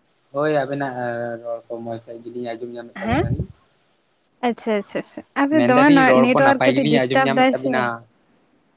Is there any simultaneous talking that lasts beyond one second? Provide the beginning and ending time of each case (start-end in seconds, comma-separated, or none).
5.6-7.7